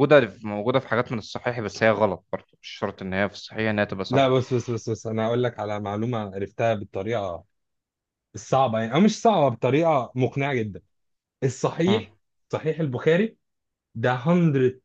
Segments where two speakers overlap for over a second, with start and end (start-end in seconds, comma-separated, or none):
none